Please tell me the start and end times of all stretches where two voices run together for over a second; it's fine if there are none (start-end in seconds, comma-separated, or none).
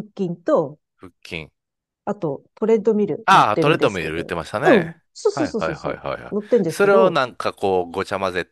3.2-7.2